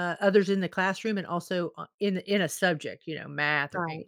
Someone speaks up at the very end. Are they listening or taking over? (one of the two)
taking over